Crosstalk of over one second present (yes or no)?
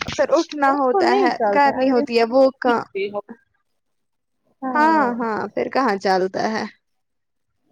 yes